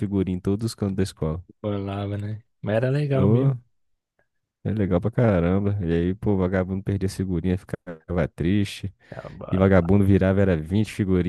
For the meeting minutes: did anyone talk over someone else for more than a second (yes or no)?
no